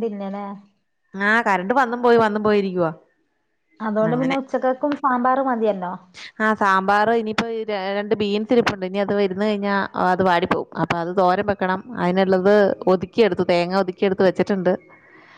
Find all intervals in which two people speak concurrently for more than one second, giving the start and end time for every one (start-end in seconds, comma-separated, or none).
none